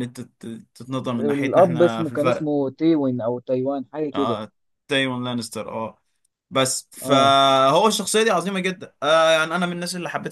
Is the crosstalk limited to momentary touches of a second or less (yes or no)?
no